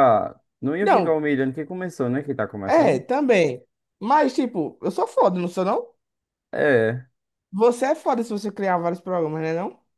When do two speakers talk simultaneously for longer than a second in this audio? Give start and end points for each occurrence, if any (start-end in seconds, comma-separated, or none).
none